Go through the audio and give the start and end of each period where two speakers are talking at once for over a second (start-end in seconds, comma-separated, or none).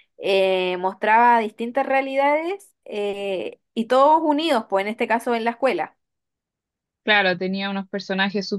none